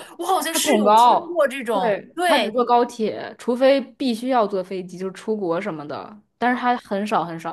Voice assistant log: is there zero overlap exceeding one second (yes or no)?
no